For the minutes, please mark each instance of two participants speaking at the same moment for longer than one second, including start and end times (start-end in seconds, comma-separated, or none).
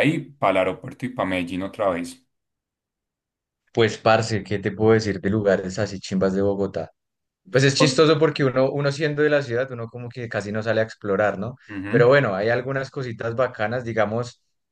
none